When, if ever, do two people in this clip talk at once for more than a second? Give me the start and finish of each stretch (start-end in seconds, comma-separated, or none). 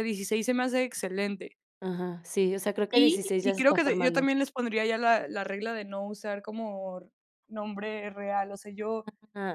2.9-4.3